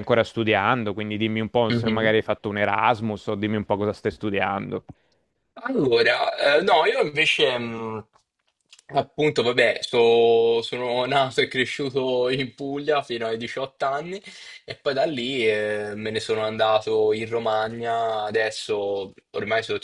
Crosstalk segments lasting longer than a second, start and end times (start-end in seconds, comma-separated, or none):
none